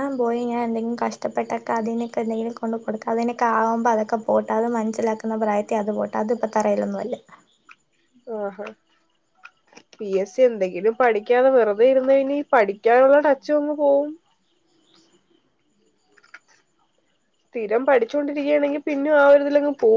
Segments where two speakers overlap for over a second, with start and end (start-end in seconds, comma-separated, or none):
none